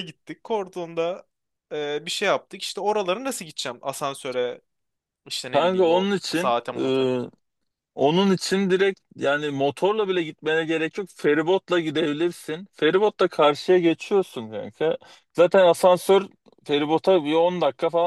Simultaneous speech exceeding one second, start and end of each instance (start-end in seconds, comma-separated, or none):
5.5-7.1